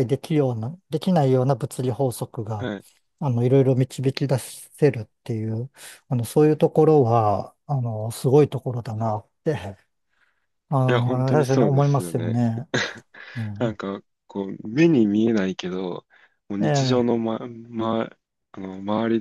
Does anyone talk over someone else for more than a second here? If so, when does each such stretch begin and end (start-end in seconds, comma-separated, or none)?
10.9-12.4